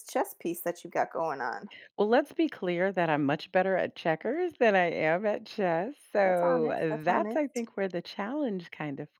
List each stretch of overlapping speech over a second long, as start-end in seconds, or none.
6.2-7.7